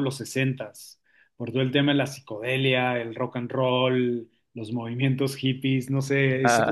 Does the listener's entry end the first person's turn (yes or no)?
no